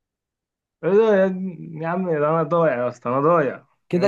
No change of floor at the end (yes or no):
no